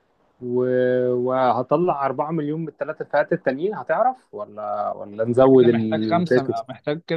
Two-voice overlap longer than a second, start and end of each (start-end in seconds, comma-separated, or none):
5.4-6.7